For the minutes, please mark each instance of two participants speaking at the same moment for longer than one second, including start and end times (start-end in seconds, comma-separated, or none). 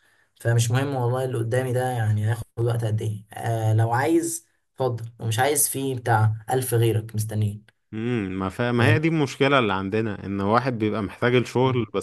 none